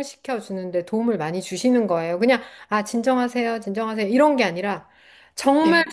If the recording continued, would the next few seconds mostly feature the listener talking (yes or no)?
no